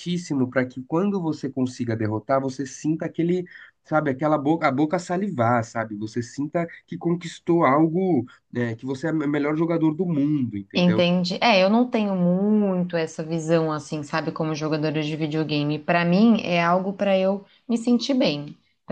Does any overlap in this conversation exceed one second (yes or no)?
no